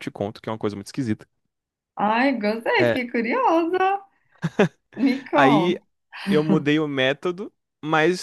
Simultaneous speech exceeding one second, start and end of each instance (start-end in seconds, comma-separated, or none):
none